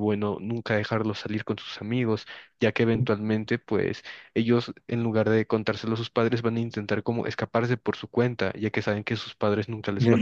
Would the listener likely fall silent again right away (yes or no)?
yes